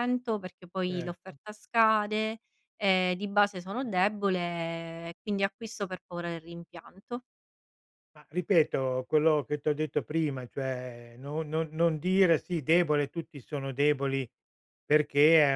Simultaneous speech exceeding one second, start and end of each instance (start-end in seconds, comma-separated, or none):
none